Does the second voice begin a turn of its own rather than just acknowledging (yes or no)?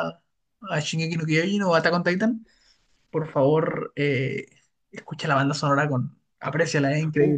yes